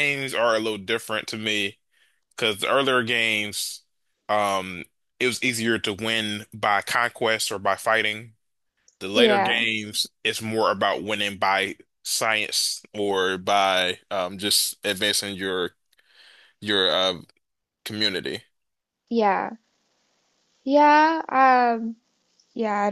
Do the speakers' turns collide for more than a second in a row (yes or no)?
no